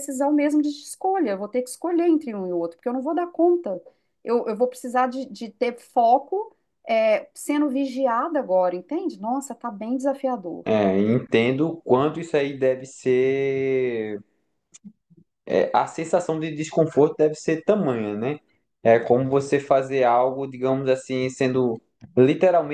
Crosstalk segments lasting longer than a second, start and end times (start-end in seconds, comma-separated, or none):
none